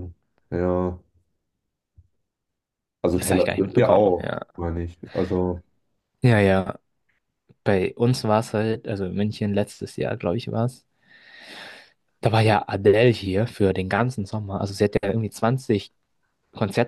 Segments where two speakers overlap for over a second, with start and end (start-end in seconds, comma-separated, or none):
3.1-4.5